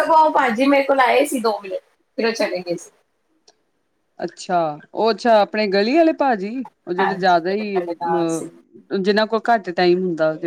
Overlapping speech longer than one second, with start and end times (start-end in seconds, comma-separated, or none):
7.0-8.4